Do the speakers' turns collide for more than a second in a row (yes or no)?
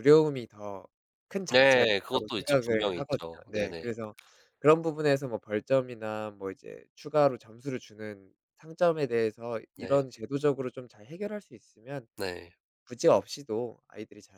yes